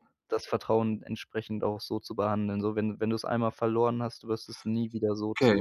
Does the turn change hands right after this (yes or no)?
yes